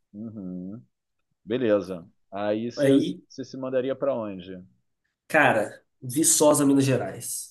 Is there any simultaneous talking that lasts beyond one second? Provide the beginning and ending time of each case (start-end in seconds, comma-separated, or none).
none